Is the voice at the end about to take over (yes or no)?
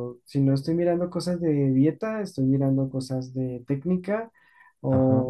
no